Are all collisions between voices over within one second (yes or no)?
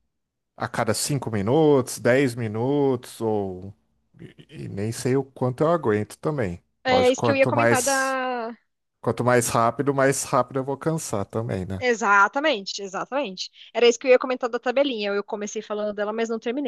no